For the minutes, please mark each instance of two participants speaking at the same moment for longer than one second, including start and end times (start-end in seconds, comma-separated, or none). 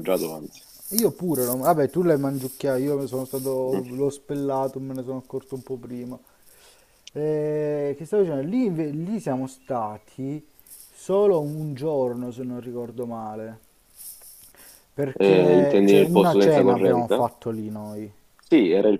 15.1-17.3